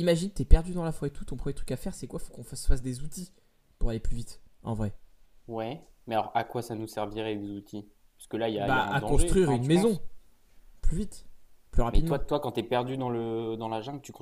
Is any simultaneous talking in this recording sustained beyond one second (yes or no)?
yes